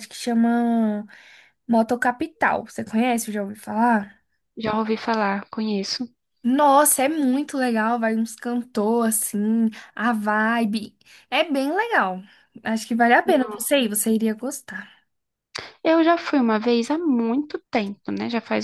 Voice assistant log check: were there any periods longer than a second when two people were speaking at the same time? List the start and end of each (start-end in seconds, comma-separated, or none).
none